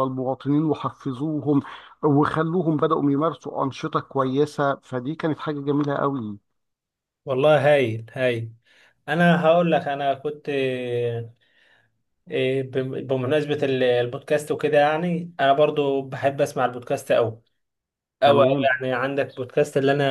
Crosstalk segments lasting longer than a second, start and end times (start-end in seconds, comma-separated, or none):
none